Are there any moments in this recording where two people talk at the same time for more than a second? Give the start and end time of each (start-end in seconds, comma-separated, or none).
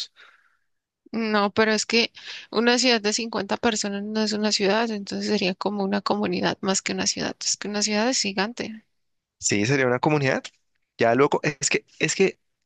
none